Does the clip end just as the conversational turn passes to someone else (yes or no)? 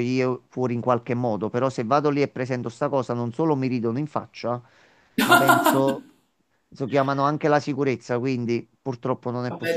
yes